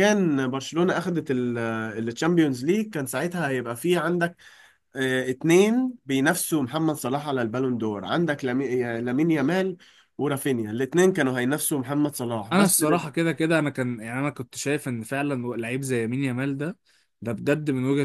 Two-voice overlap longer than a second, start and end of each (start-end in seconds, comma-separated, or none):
none